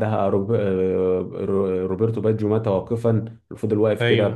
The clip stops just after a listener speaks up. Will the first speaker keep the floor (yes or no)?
yes